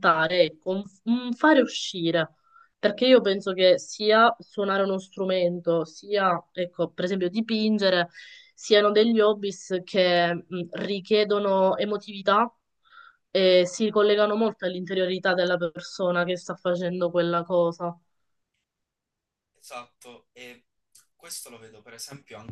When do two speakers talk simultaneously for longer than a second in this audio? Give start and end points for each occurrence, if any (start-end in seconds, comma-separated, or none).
none